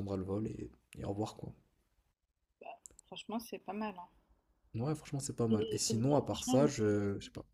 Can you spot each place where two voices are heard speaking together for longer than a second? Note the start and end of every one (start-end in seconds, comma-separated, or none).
5.5-7.0